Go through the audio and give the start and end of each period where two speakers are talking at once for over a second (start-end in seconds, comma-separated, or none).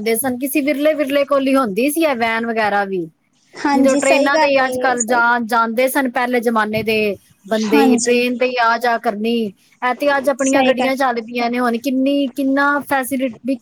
3.8-5.2